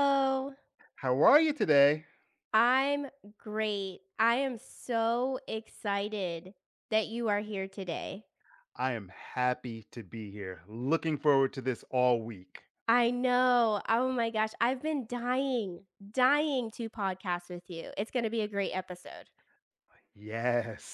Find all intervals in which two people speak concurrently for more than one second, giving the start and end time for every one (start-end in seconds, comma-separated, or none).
none